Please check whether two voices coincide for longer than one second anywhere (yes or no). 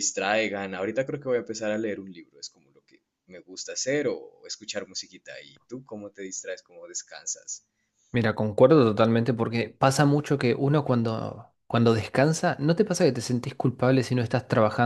no